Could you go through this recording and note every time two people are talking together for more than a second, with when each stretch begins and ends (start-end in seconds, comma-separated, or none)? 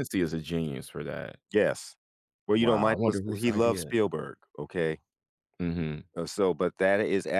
2.6-3.9